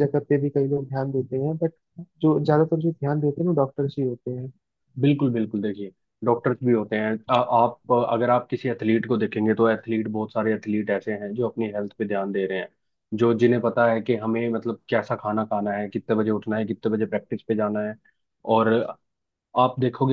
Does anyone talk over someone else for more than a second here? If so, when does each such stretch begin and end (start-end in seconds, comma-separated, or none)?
none